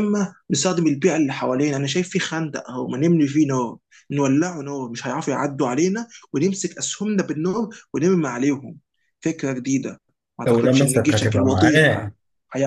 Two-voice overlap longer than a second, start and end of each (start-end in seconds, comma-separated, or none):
10.5-12.1